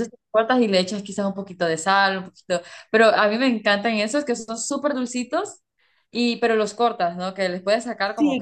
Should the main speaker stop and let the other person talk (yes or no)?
yes